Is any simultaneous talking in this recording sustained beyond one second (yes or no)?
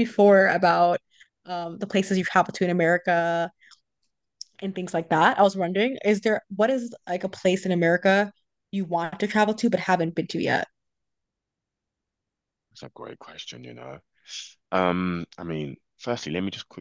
no